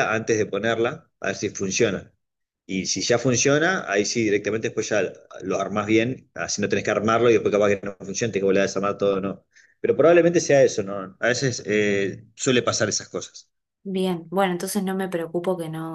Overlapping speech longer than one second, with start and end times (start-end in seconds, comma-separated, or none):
none